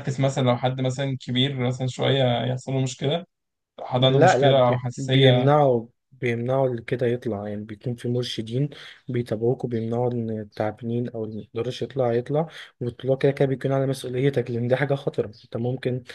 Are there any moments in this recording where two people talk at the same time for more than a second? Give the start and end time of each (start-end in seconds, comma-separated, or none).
4.0-5.5